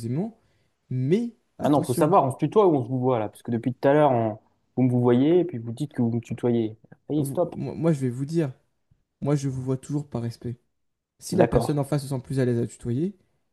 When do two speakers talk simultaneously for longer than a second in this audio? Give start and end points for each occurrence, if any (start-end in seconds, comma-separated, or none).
none